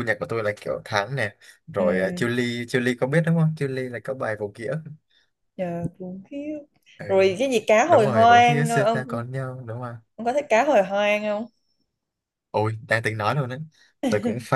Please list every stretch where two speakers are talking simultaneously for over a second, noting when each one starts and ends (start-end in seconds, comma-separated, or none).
7.8-9.2